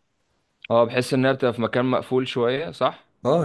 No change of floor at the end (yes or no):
no